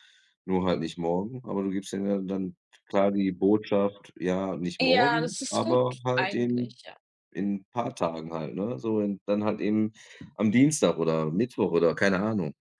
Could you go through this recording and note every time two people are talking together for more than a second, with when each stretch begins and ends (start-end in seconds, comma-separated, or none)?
4.8-6.8